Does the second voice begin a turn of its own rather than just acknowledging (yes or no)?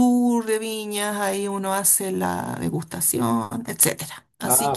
yes